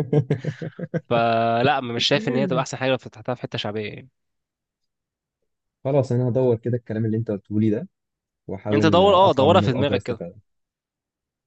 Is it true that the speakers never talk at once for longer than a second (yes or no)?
no